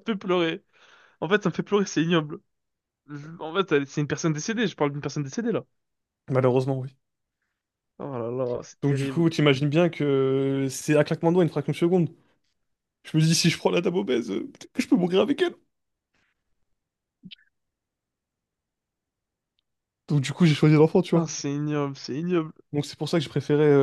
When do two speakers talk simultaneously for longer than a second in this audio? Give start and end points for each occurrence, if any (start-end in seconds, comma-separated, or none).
none